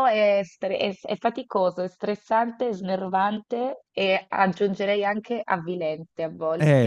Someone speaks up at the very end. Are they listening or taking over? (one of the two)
taking over